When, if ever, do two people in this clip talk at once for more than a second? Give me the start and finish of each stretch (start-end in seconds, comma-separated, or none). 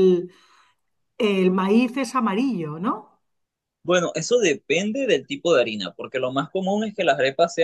none